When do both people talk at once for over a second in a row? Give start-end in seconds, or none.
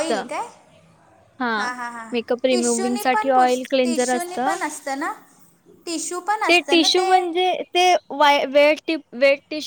2.5-4.4